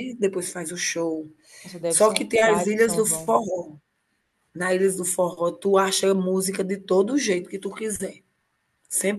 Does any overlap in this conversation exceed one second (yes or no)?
yes